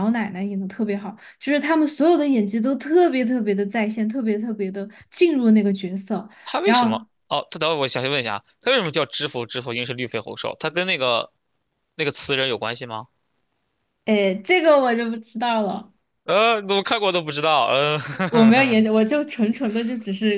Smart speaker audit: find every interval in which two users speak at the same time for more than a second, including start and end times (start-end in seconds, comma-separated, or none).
none